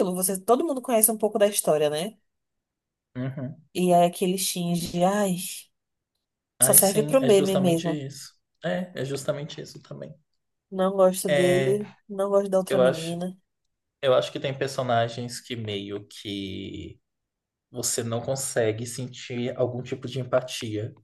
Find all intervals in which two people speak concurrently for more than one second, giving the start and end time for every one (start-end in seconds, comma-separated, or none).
6.6-8.0